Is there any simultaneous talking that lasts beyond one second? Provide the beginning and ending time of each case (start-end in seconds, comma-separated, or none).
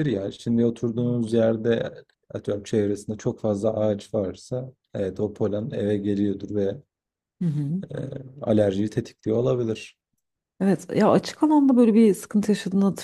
none